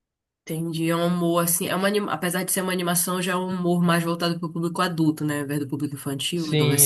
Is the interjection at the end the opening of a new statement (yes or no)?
yes